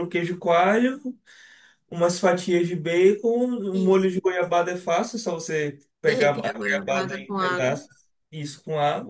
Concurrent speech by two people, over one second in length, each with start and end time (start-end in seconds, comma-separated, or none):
6.1-7.8